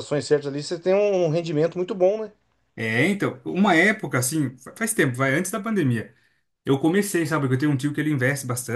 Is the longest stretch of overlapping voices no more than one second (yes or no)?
yes